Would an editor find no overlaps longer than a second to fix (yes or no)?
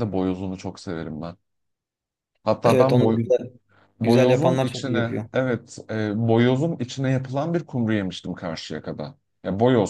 no